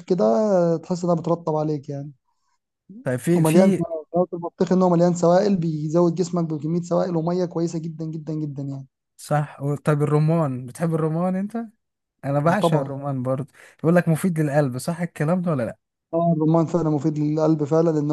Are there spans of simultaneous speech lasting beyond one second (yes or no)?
no